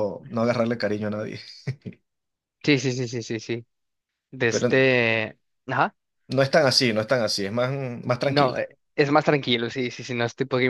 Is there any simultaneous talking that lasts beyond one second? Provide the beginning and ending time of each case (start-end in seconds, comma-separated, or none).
none